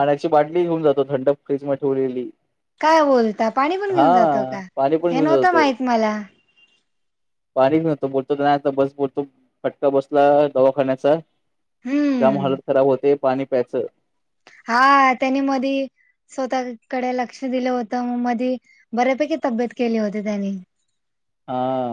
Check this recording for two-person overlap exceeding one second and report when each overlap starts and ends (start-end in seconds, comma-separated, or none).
none